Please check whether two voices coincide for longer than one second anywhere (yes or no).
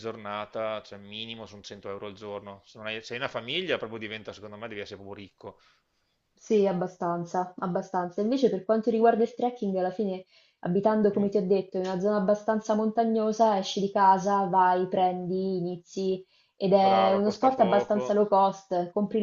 yes